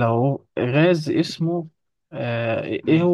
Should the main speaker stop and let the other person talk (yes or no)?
no